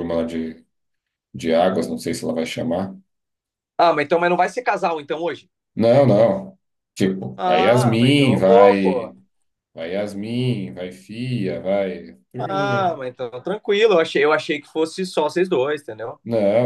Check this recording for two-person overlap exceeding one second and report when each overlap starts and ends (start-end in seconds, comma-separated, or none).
7.4-9.1